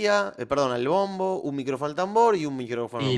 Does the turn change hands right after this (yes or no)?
yes